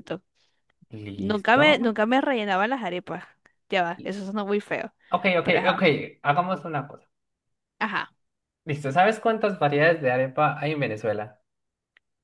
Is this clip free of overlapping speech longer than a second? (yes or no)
yes